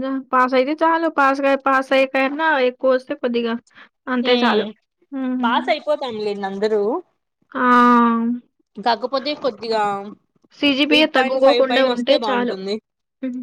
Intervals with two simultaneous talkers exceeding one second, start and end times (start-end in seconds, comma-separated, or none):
10.9-12.6